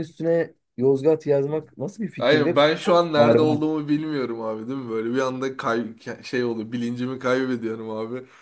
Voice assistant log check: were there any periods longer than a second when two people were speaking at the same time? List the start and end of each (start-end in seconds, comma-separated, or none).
2.2-3.6